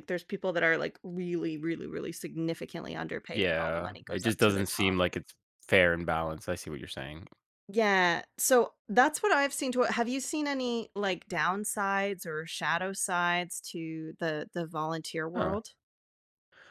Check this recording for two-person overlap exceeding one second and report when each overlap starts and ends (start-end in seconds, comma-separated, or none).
3.3-5.0